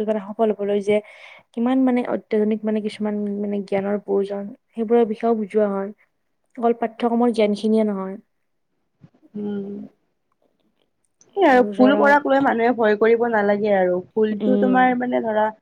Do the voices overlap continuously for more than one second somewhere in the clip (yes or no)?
no